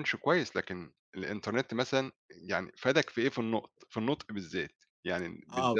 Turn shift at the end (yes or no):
yes